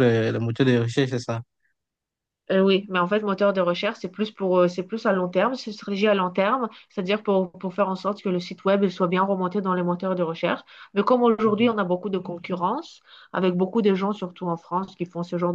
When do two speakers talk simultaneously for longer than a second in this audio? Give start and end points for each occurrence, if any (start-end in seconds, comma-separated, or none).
none